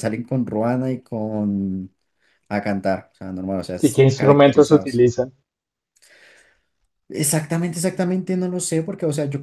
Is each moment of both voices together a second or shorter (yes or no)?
no